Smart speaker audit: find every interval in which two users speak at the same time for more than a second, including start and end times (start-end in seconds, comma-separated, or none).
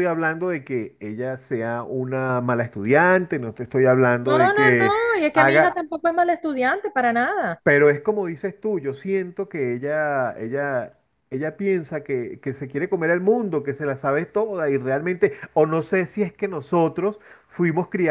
4.2-5.8